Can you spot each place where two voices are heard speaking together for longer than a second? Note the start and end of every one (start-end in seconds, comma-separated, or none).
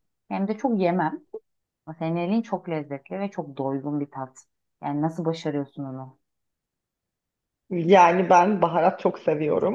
none